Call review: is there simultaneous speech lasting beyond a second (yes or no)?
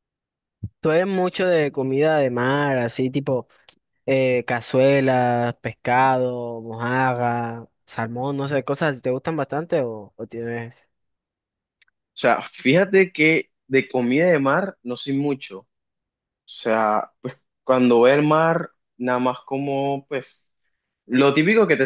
no